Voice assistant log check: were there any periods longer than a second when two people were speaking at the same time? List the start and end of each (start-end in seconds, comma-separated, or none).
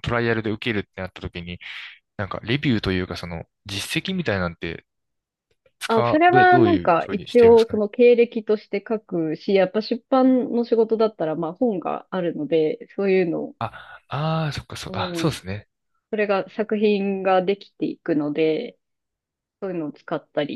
5.9-7.8